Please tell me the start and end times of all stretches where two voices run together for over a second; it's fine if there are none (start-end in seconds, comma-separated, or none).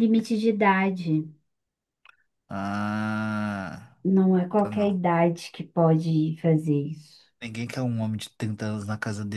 none